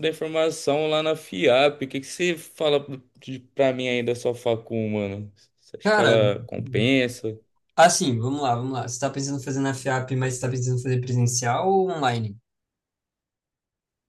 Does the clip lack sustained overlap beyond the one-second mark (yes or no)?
yes